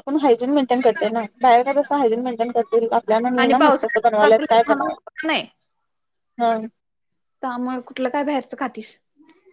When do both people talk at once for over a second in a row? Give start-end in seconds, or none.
3.4-4.9